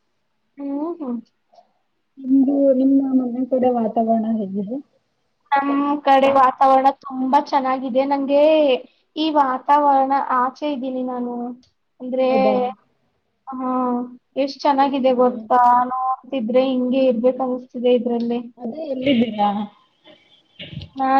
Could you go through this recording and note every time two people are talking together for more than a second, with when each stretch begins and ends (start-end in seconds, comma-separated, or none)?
none